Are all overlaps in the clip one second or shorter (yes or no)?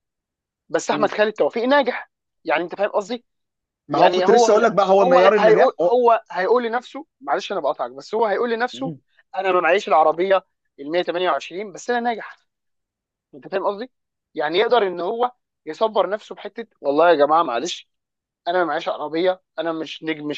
no